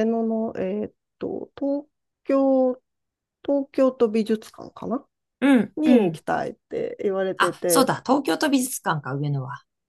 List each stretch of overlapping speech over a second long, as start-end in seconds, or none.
none